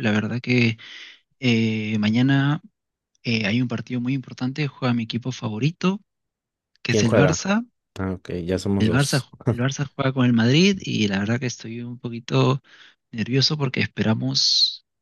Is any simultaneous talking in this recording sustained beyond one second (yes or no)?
no